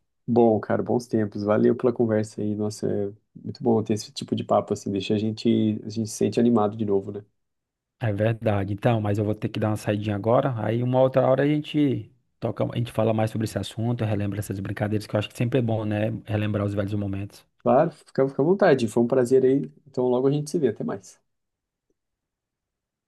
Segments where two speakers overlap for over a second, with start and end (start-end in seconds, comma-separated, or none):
none